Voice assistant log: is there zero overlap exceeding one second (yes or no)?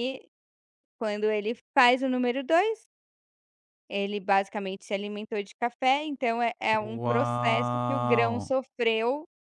no